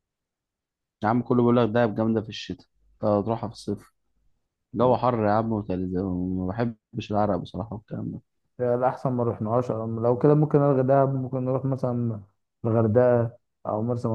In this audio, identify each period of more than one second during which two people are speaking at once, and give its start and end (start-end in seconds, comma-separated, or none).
none